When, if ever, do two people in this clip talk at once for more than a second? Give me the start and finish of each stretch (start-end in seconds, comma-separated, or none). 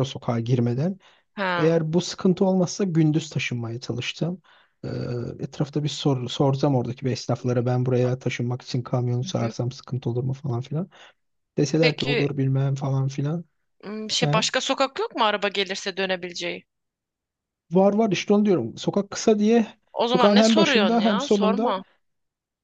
20.1-21.8